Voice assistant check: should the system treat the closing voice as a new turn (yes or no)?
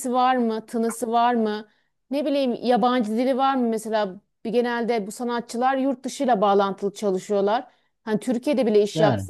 no